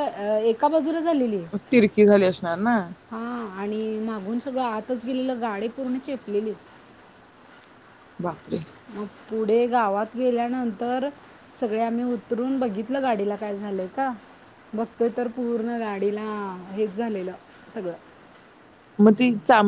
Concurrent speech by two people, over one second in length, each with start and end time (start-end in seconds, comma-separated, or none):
none